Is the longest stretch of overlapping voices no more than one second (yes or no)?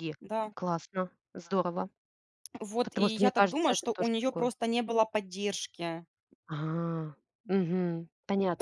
no